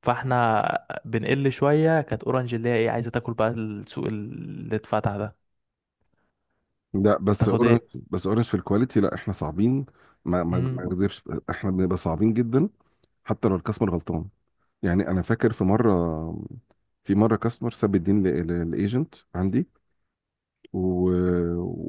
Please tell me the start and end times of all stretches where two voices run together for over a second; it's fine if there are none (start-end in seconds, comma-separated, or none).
none